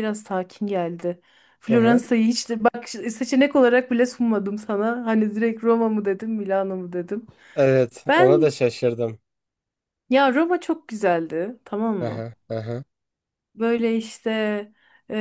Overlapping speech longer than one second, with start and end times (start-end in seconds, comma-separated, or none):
none